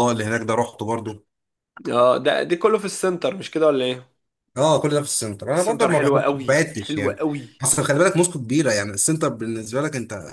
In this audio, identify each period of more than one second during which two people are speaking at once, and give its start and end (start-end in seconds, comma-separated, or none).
5.5-7.2